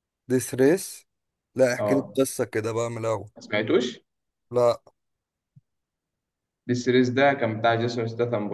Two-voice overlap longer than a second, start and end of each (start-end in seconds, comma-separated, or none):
none